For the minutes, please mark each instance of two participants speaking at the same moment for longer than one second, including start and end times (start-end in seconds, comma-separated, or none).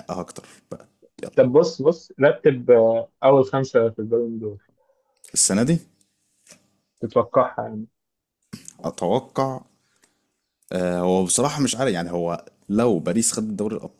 none